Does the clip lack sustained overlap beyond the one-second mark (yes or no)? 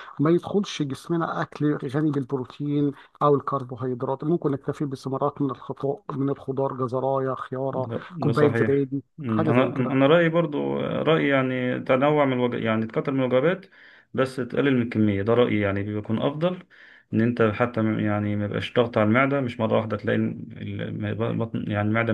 no